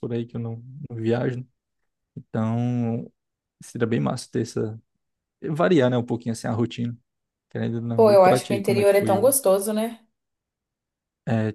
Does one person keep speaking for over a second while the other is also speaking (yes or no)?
yes